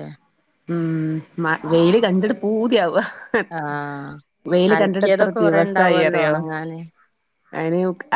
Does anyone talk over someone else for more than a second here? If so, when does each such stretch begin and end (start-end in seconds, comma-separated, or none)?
4.8-6.3